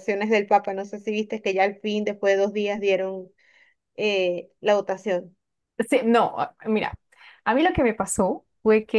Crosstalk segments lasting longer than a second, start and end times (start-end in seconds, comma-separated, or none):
none